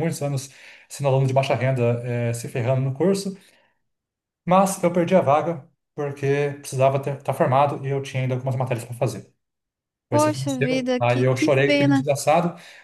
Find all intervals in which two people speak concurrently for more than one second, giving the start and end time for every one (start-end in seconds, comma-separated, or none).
10.1-12.0